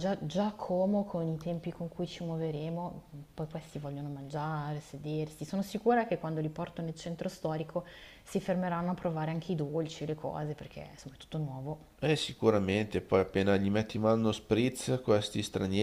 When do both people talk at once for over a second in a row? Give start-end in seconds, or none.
none